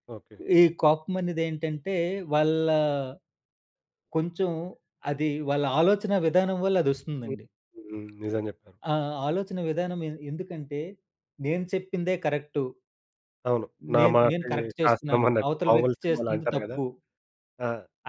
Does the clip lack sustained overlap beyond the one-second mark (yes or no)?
no